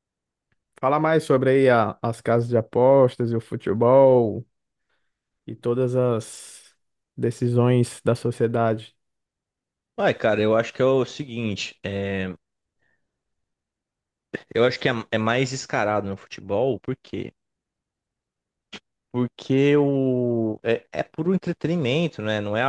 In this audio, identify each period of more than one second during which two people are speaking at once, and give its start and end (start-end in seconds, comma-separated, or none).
none